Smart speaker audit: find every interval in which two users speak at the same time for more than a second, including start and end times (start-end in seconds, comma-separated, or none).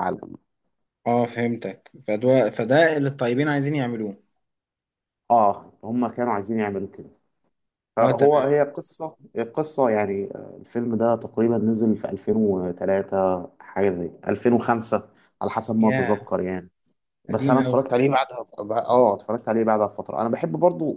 none